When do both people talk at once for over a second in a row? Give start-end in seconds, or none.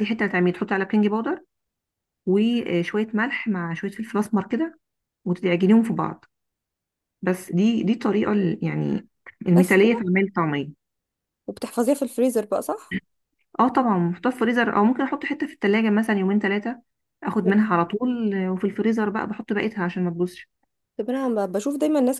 none